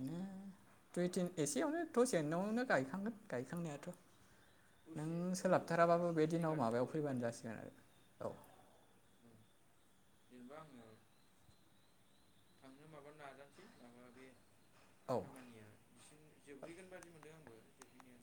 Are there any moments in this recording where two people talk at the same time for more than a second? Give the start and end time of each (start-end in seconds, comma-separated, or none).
5.0-7.3